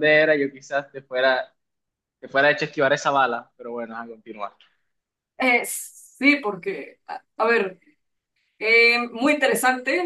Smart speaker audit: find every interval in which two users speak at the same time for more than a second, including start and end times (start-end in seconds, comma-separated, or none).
none